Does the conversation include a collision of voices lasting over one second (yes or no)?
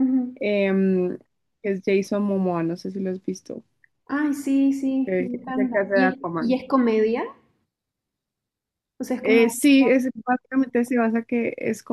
yes